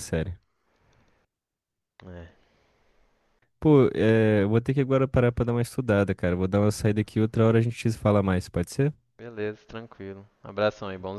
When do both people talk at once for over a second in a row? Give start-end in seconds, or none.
none